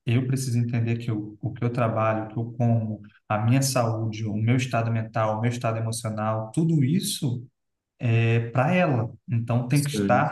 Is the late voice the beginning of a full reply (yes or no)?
no